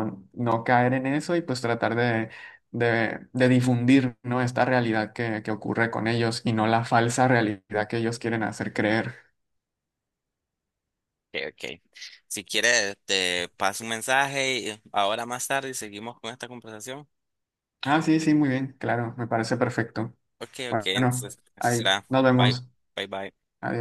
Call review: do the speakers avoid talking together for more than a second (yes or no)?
no